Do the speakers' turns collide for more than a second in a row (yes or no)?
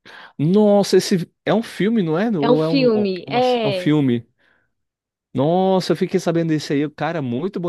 yes